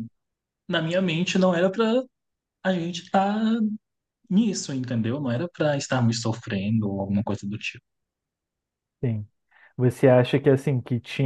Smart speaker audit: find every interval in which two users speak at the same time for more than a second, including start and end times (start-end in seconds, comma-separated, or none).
none